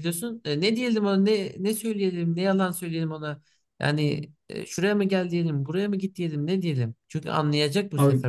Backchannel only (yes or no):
yes